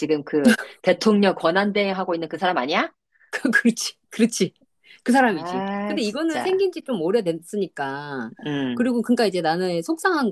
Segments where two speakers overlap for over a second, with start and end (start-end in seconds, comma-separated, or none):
5.3-6.6